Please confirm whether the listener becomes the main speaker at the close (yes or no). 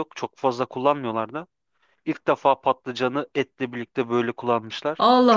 yes